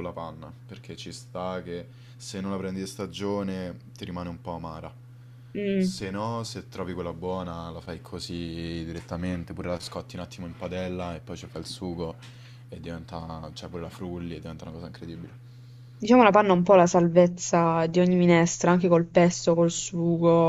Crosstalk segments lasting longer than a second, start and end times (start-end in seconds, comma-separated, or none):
none